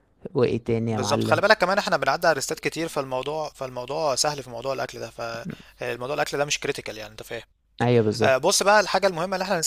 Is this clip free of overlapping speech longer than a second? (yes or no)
yes